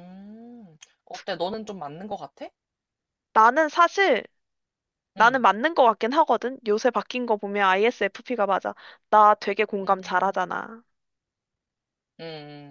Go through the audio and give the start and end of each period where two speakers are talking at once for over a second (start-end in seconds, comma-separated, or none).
none